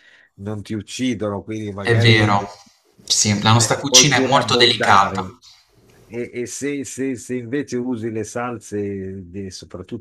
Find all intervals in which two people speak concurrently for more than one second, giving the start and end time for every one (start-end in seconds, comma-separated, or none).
3.4-5.2